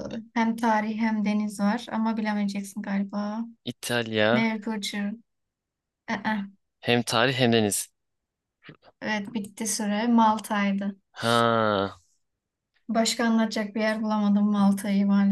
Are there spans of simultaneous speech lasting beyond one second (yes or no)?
no